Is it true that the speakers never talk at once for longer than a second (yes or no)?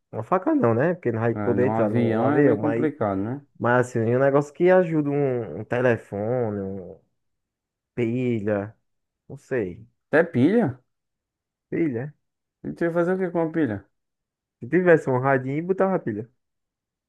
no